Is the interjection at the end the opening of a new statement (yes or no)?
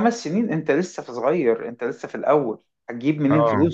no